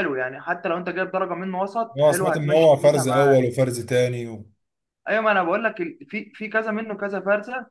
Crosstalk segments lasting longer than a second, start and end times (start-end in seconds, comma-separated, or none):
2.0-3.4